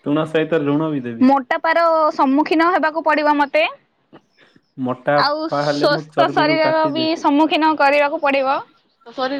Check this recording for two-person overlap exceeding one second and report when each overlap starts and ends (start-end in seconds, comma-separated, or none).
5.3-7.1